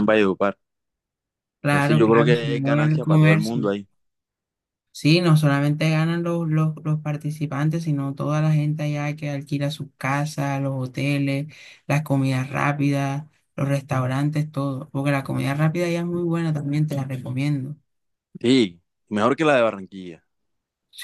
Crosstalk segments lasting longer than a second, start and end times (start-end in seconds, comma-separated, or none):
1.7-3.7